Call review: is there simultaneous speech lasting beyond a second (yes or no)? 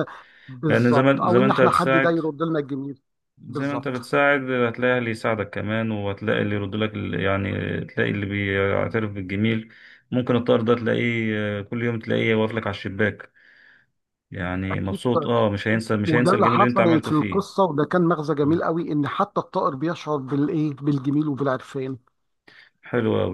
yes